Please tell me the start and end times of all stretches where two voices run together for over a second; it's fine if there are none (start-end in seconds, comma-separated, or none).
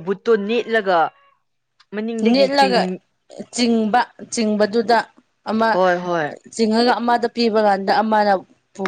none